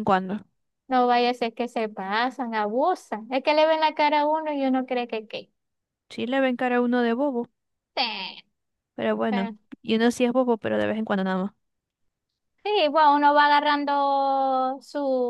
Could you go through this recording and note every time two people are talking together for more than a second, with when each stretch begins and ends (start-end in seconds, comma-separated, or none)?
none